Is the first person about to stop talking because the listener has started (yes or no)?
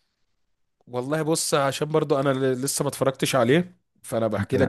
no